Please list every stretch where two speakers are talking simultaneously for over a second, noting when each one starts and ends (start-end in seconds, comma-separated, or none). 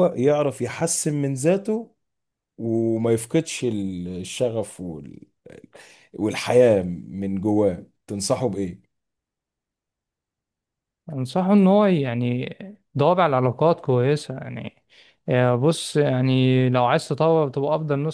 none